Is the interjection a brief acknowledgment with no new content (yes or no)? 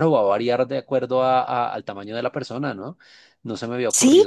no